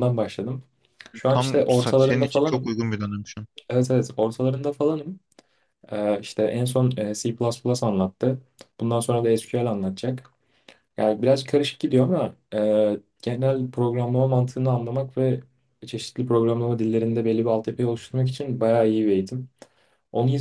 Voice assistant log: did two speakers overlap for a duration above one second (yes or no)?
yes